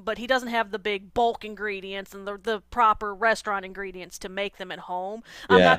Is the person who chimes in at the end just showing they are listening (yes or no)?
yes